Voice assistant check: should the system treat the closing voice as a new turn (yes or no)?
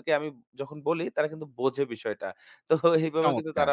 no